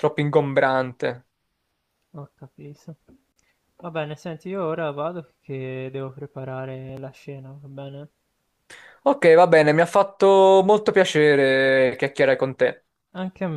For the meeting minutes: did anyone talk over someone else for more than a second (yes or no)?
no